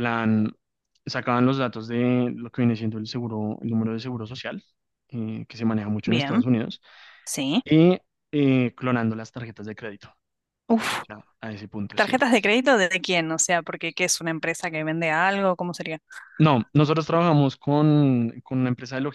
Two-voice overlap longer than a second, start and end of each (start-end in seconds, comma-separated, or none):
none